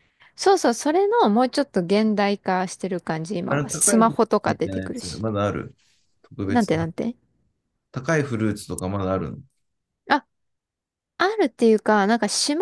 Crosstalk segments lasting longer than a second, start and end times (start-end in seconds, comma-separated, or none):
3.5-5.2